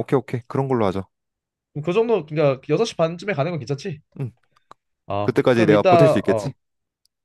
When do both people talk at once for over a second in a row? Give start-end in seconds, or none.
5.2-6.5